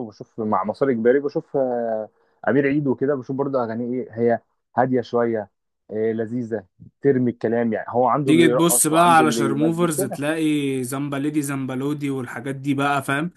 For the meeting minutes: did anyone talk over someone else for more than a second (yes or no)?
yes